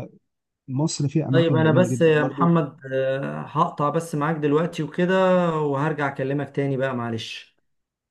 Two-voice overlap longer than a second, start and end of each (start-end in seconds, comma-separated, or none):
1.3-2.5